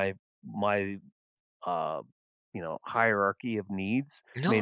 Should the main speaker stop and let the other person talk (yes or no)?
yes